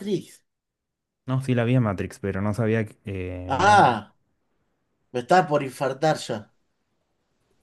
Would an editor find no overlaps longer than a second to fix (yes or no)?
yes